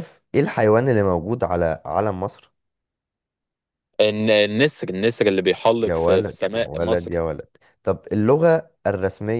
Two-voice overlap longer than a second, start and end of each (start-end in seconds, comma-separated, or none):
5.8-7.1